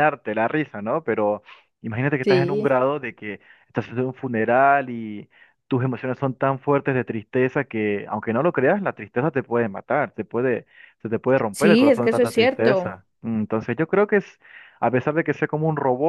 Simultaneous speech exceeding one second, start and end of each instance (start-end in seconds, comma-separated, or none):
11.5-12.9